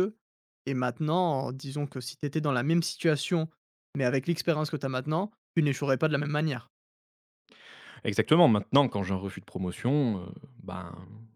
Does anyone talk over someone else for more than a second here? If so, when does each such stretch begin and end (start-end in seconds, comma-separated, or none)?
none